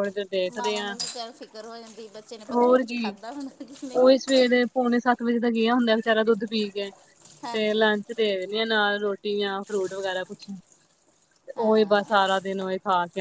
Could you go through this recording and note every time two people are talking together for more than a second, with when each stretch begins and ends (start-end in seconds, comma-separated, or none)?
none